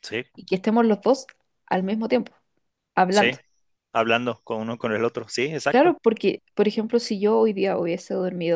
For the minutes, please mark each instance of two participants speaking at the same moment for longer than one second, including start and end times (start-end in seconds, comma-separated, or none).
none